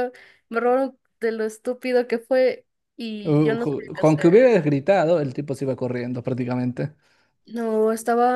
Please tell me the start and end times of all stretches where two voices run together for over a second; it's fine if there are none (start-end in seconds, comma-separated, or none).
3.2-4.5